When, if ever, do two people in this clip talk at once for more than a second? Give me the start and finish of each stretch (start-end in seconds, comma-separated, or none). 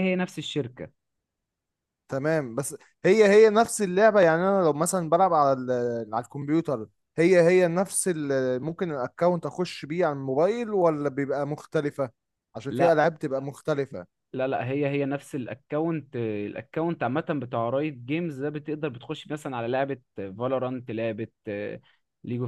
none